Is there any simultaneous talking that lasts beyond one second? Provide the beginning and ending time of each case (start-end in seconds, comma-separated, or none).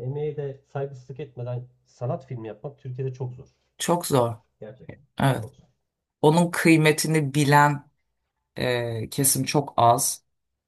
none